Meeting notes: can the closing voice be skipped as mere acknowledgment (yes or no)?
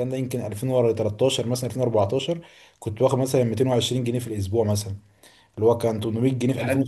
yes